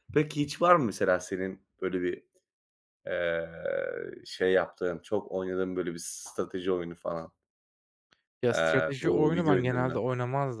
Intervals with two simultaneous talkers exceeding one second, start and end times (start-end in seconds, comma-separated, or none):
8.5-10.0